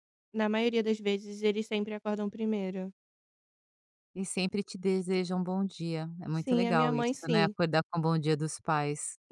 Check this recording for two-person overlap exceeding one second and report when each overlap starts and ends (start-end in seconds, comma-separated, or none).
6.3-7.5